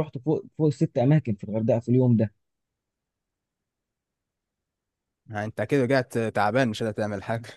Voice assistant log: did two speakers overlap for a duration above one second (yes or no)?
no